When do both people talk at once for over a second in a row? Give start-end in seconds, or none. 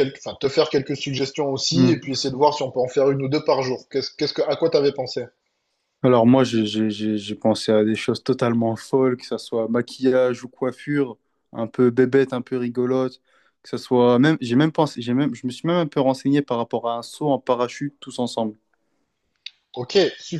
none